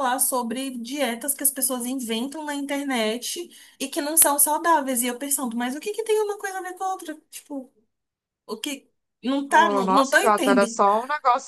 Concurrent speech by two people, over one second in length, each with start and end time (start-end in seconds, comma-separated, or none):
9.5-10.8